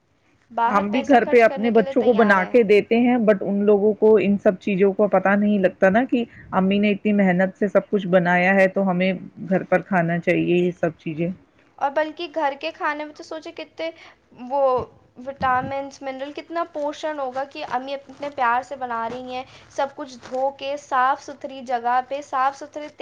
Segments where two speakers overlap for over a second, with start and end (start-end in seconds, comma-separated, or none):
0.7-2.5